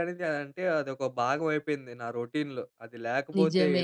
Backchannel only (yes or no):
yes